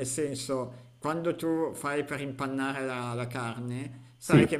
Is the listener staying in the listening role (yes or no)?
yes